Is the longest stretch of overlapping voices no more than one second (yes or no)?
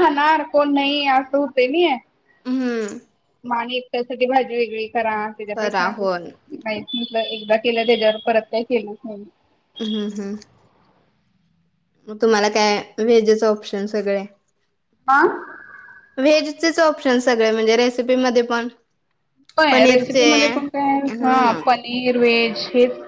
no